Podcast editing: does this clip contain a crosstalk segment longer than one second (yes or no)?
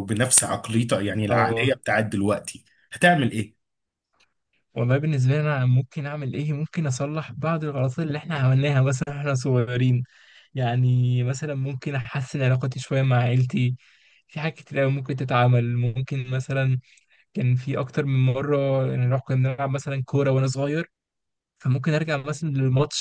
no